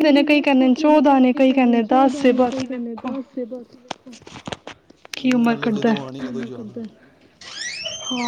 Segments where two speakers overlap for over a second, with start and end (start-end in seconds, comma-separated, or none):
1.9-3.1